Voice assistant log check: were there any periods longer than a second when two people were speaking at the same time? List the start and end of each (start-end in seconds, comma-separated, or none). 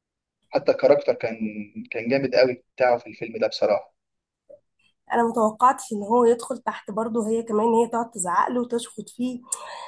none